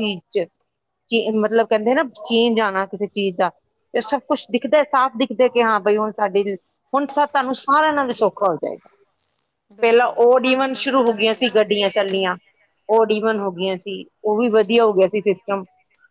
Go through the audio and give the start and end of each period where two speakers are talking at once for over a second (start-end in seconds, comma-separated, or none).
9.8-11.5